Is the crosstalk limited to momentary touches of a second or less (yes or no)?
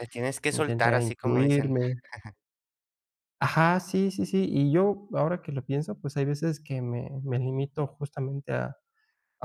no